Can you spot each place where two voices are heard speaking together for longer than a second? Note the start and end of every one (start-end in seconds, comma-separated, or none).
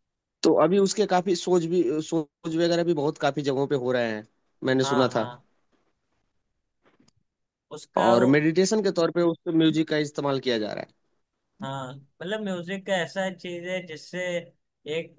none